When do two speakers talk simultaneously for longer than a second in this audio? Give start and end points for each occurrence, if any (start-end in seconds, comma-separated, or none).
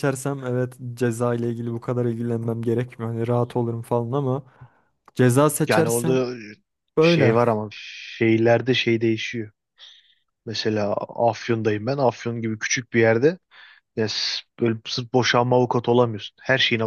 none